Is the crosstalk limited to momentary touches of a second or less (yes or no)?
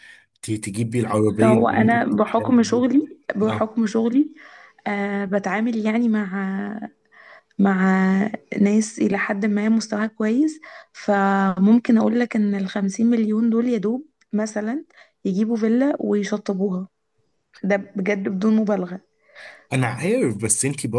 no